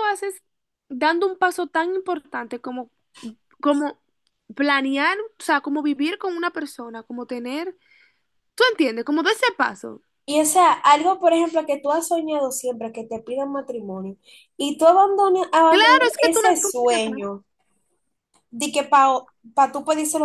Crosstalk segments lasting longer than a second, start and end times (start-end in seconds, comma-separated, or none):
15.7-17.3